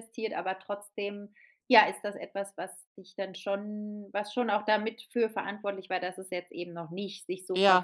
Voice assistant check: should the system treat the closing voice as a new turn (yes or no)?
yes